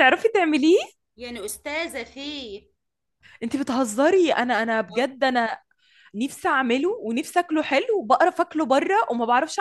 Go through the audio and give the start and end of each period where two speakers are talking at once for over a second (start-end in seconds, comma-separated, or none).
none